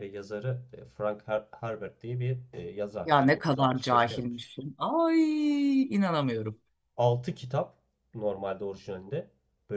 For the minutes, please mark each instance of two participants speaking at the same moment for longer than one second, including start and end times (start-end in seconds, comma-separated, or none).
3.0-4.4